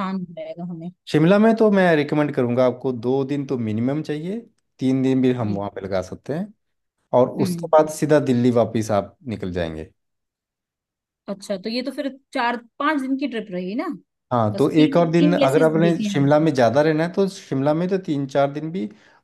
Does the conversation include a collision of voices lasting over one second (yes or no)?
yes